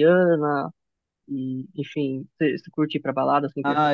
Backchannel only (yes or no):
no